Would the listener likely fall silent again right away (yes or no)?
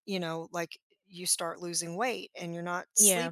yes